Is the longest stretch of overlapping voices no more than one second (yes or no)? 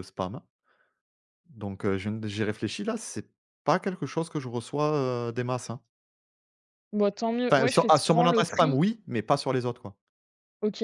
no